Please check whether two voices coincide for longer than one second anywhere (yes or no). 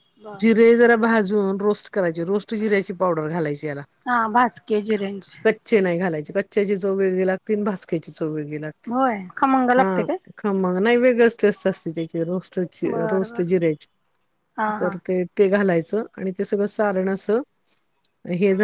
no